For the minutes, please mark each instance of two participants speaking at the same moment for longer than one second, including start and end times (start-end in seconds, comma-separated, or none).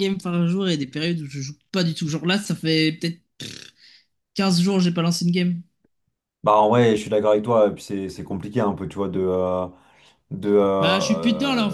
none